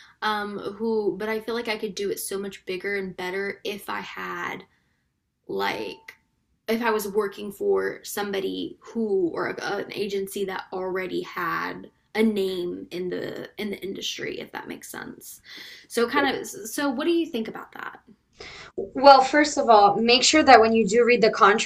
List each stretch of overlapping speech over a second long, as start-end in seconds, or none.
none